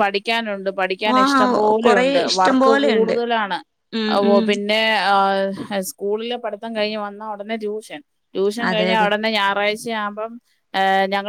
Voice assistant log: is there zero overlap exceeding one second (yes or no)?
no